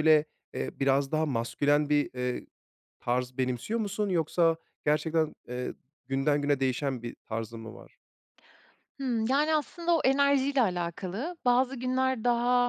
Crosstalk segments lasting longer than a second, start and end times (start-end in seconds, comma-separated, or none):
none